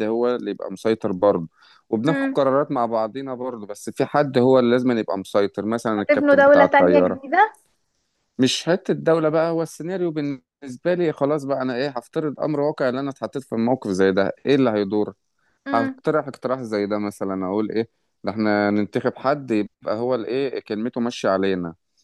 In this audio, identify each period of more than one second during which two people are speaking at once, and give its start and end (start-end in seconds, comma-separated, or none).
6.0-7.3